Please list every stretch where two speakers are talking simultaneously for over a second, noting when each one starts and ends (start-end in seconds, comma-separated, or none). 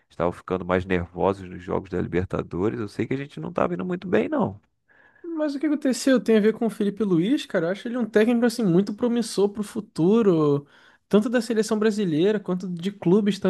none